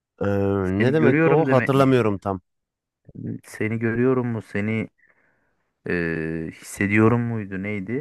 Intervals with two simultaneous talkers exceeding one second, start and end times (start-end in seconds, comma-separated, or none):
0.8-2.2